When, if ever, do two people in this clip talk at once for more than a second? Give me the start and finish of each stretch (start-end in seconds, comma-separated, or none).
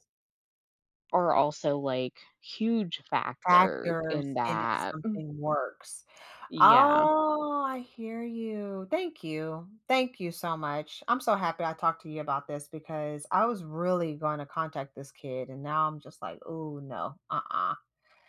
3.5-4.9